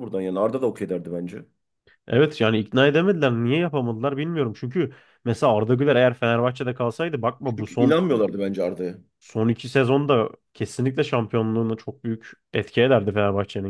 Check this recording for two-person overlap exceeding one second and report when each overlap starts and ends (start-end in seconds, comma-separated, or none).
none